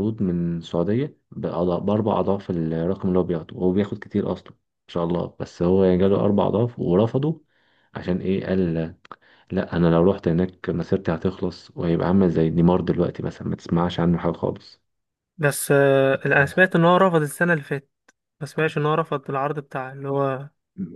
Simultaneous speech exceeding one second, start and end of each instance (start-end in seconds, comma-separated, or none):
none